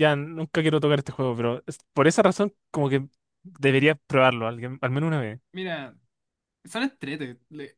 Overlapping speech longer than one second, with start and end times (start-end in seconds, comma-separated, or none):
none